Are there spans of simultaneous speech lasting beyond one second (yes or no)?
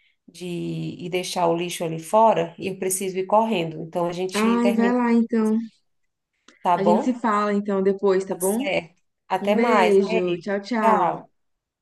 yes